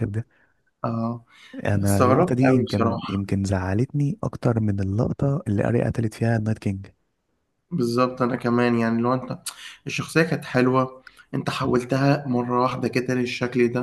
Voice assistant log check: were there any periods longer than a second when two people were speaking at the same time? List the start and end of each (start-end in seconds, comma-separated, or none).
1.8-3.2